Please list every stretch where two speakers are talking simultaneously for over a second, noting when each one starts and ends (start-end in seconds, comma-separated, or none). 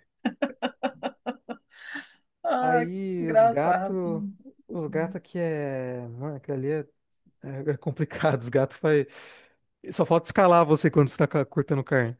2.6-4.2